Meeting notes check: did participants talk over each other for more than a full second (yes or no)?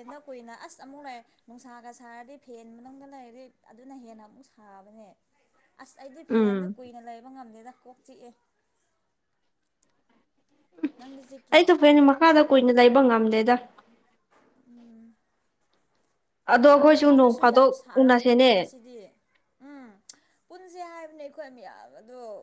yes